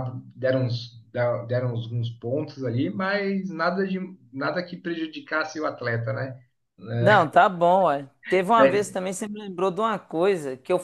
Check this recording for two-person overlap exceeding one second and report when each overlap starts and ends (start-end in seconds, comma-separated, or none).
none